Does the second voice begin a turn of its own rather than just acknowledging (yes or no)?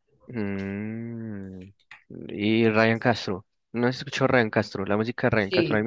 no